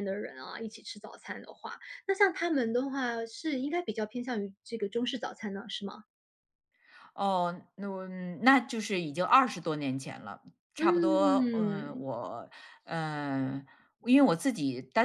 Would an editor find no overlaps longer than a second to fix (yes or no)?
no